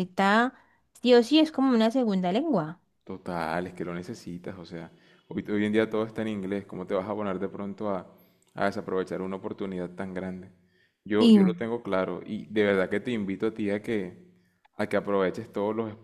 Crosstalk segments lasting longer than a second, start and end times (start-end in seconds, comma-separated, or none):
none